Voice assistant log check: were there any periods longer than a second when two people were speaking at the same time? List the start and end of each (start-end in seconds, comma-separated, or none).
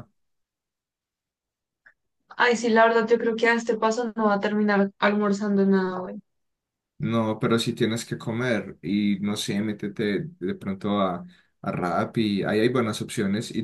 none